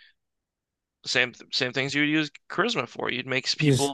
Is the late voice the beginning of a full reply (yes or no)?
no